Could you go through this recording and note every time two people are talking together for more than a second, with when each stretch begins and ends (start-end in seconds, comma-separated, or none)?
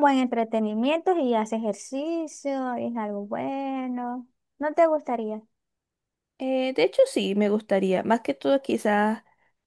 none